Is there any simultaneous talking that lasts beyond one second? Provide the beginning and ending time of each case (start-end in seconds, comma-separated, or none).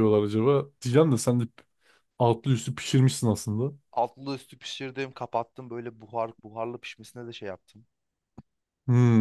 none